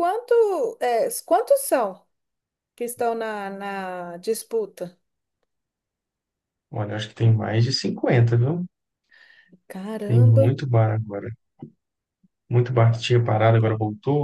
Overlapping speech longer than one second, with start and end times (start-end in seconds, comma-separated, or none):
none